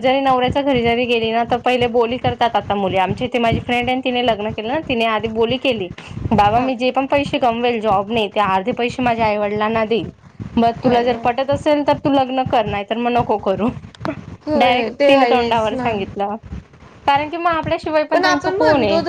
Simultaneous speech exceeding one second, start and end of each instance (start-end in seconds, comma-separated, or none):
14.6-15.9